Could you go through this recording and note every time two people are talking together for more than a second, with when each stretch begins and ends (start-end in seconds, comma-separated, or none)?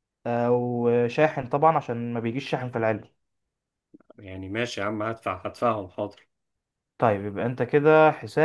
none